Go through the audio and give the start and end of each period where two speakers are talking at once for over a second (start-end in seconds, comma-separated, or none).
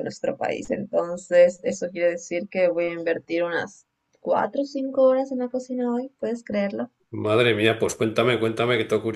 none